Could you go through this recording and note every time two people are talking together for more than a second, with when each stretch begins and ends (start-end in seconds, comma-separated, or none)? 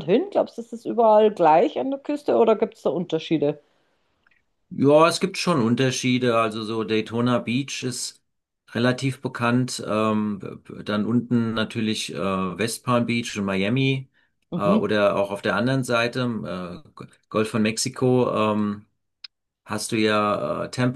none